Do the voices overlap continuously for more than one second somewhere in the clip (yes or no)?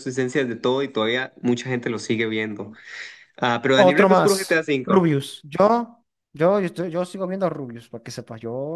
yes